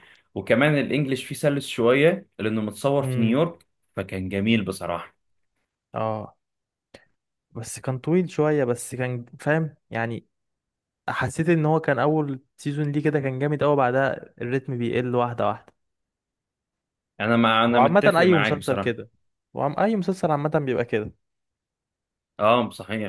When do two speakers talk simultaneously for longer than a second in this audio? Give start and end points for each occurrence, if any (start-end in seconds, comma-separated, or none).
17.7-19.0